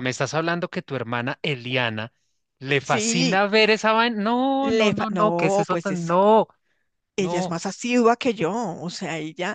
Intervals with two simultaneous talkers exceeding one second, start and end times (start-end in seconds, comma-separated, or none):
4.6-6.1